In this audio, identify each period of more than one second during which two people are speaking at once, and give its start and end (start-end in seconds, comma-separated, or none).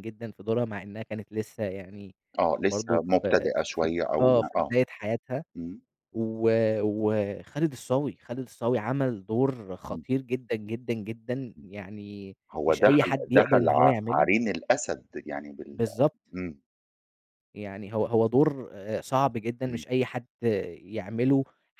2.6-4.7, 12.5-14.3